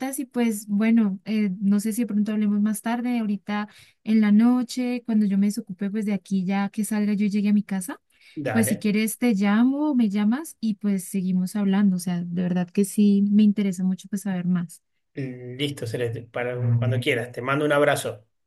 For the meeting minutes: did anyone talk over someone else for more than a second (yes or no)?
no